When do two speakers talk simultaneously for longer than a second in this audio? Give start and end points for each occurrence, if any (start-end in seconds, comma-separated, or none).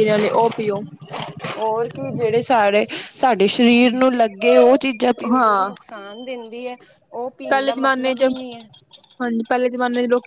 none